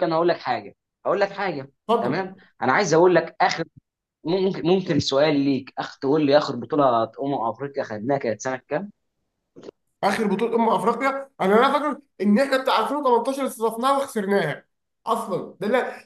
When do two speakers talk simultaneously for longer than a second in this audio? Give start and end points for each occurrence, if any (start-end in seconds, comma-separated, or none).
none